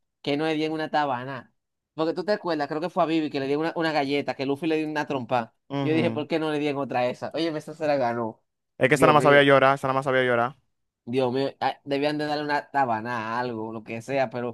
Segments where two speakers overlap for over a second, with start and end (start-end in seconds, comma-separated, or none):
none